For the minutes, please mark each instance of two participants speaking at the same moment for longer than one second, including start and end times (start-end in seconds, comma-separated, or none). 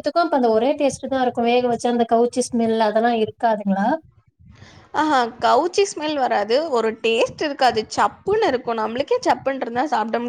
none